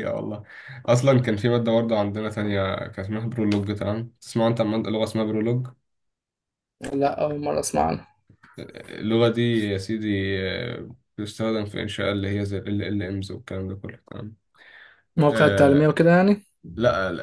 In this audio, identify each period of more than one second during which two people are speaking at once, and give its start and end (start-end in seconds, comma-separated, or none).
none